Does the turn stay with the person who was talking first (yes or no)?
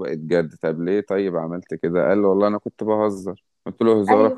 yes